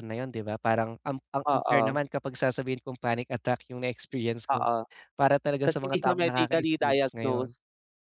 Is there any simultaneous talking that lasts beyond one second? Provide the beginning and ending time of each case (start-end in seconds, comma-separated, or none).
5.6-7.5